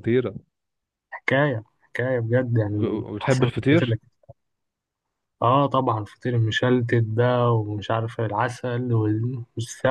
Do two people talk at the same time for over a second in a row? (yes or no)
yes